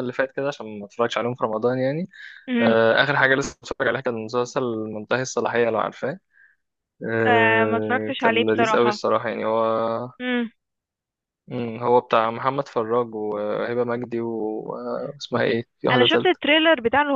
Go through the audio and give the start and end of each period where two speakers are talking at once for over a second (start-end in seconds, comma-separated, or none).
7.2-9.0